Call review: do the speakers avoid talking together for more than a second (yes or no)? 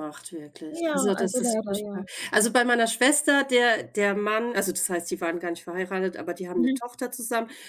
no